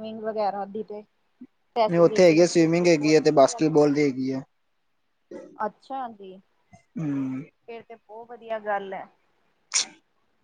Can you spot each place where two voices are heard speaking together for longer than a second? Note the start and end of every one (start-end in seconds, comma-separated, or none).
1.9-3.7